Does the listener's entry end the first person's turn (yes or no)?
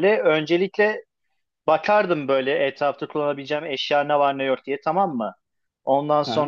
no